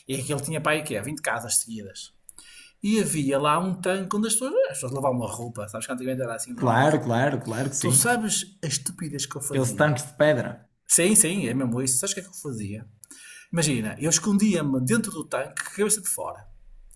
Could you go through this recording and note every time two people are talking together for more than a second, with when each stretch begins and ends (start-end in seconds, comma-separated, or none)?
none